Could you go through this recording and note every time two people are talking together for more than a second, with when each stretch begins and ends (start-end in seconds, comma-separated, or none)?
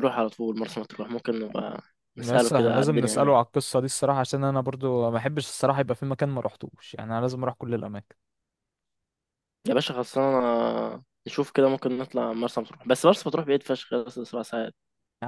2.2-3.4